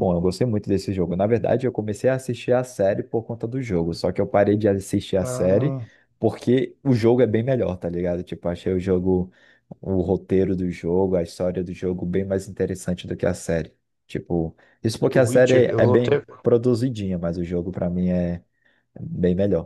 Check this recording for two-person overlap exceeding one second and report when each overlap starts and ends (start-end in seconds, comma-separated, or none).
15.0-16.2